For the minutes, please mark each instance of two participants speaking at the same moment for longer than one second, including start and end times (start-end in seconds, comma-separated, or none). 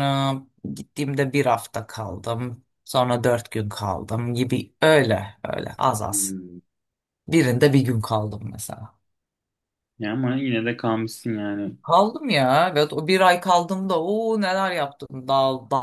none